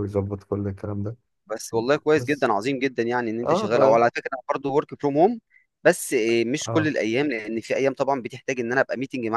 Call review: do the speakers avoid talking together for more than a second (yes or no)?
yes